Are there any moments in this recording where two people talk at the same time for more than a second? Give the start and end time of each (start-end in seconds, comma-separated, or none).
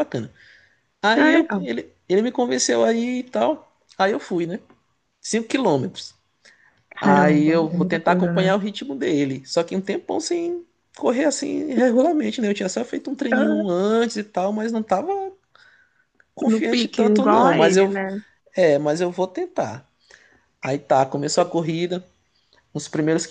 7.0-8.5, 16.4-17.9